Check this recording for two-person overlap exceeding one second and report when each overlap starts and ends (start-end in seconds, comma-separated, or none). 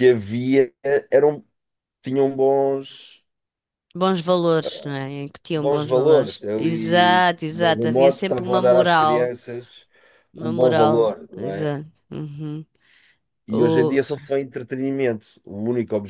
5.6-9.3, 10.4-11.7